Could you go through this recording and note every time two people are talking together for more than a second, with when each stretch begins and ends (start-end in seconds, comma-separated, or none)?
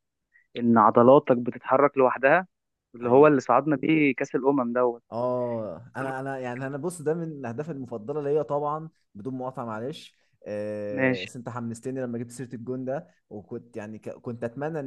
none